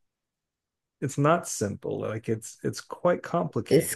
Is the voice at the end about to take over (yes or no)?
yes